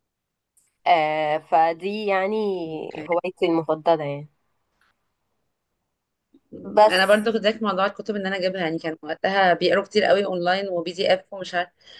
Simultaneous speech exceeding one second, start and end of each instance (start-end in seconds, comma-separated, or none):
none